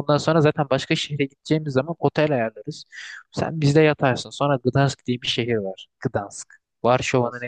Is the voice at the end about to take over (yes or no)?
no